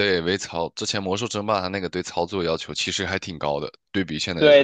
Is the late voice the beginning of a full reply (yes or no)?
yes